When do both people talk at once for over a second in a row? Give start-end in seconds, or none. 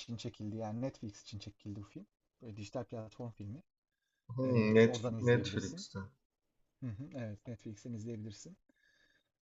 4.4-5.9